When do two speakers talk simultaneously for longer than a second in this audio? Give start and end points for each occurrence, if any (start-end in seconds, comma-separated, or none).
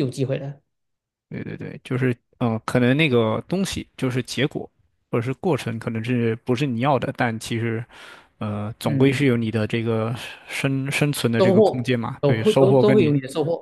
11.4-13.1